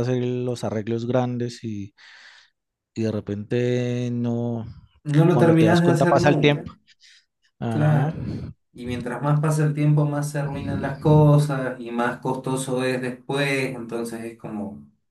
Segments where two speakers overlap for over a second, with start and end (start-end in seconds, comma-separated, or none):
5.3-6.7